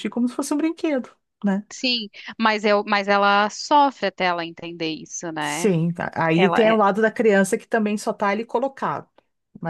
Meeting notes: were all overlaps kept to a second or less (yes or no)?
yes